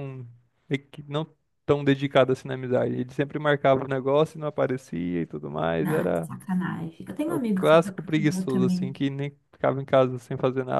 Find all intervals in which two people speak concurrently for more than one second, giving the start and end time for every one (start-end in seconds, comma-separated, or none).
7.2-8.9